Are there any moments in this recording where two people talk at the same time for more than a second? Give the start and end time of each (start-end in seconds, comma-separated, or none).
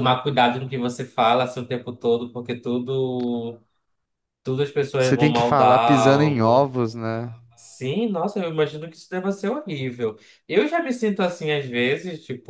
5.0-6.7